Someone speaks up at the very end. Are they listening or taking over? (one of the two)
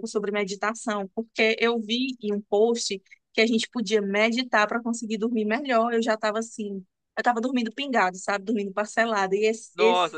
taking over